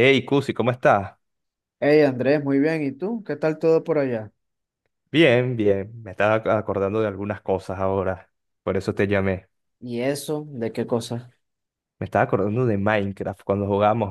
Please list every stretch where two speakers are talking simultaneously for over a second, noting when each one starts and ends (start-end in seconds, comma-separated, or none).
none